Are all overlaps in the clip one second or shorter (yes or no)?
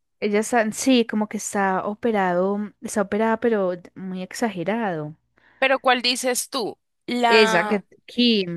yes